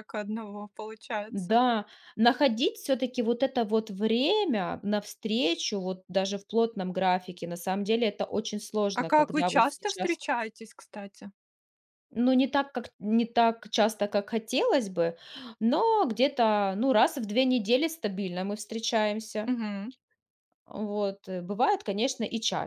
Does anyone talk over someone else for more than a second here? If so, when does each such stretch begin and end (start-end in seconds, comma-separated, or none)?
8.9-10.2